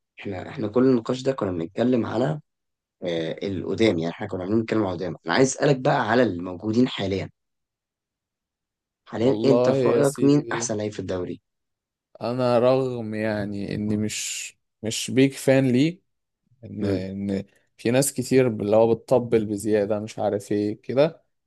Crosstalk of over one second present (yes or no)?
yes